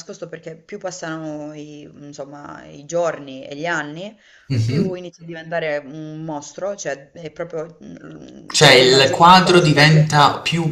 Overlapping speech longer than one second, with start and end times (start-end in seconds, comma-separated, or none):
8.5-10.1